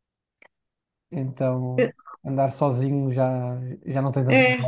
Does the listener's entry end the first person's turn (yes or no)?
yes